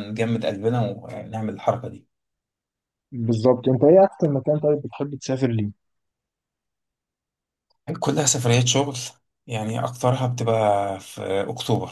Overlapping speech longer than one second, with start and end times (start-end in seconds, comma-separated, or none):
none